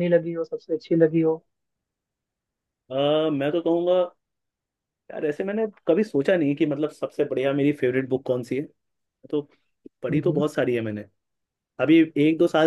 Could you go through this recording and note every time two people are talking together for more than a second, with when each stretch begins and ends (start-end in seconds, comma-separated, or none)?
none